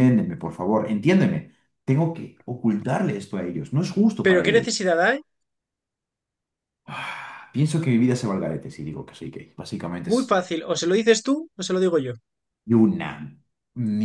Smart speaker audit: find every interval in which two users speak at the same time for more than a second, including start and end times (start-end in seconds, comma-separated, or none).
none